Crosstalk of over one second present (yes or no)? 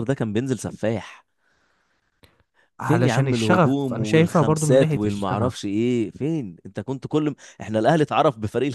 yes